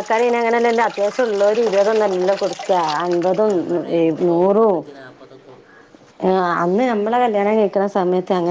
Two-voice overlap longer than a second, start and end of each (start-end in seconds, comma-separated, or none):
none